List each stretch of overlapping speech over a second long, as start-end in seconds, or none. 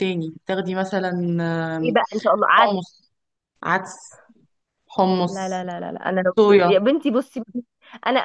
none